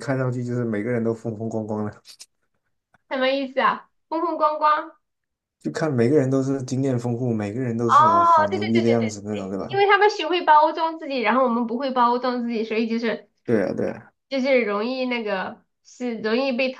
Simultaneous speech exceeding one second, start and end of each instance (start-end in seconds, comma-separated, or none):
7.8-9.8